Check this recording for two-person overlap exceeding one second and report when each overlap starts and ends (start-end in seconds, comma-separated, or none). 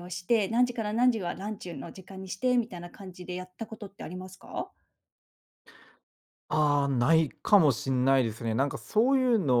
none